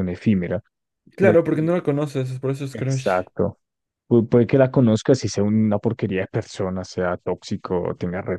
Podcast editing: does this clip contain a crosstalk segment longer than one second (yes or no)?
no